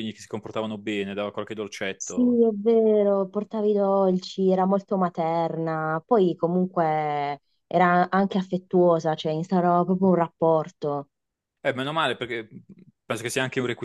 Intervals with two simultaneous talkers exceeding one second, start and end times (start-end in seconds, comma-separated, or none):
none